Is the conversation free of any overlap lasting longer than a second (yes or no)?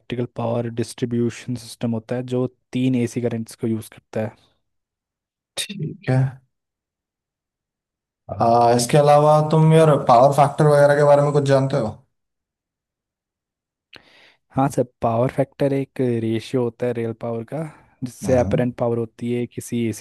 yes